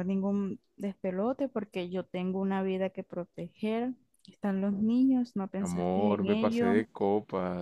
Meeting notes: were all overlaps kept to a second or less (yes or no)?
no